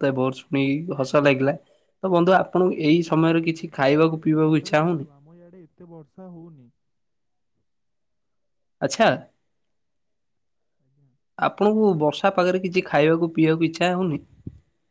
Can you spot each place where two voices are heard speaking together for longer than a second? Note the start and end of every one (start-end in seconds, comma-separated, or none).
2.9-5.1